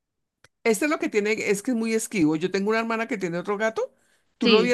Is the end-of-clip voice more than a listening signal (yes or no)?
no